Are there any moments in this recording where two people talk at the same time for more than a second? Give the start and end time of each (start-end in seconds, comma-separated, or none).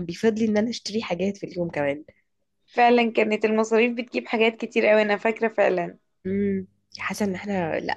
none